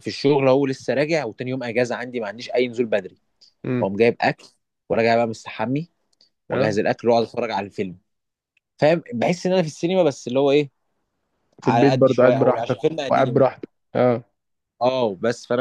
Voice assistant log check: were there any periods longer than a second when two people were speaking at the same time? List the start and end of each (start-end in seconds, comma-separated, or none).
11.6-13.4